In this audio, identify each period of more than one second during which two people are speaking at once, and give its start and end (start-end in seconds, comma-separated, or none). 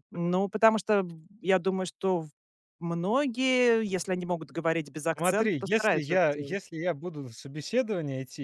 5.2-6.7